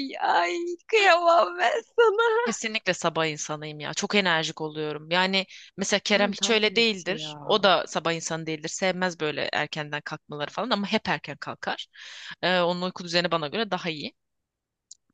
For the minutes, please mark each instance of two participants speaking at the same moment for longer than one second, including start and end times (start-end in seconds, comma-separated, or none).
6.1-7.6